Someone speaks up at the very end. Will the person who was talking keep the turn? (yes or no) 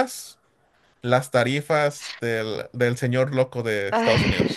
no